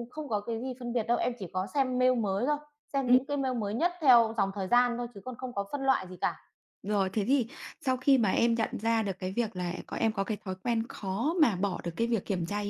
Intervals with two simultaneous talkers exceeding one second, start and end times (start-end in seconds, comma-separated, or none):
none